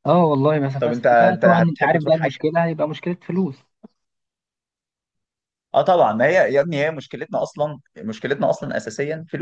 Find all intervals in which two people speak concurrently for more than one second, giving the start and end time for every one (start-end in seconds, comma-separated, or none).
0.8-2.4